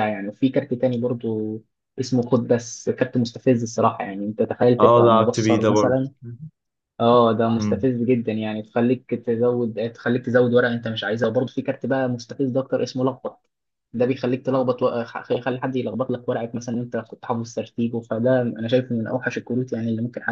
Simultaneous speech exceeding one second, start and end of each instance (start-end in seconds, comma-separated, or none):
4.8-6.0